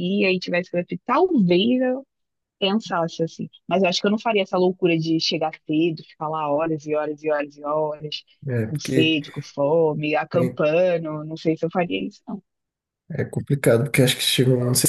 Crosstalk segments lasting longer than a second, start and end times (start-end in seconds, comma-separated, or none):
none